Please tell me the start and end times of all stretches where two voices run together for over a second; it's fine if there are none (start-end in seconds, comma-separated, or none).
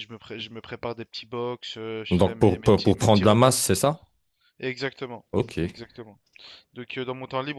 2.1-3.5